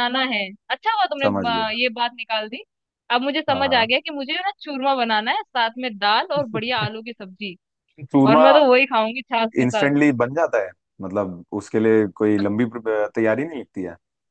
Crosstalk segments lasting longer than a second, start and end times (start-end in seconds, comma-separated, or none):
none